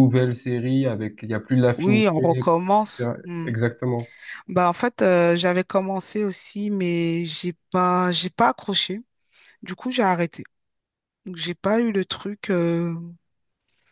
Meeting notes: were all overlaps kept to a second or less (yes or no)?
no